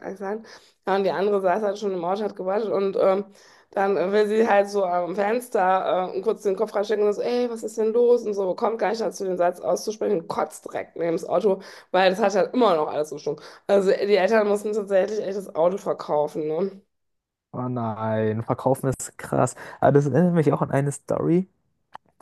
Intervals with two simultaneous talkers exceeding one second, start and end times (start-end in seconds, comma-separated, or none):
none